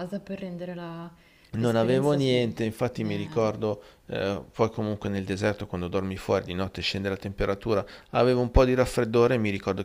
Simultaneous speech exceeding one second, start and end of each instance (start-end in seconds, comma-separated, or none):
1.6-3.5